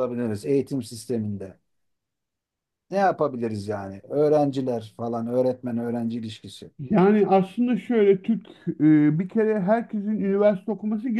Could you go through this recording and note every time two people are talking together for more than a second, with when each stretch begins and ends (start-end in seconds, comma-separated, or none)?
none